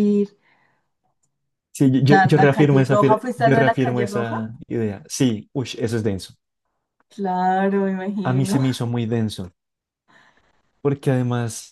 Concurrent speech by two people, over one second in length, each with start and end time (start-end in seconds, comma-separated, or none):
2.1-4.4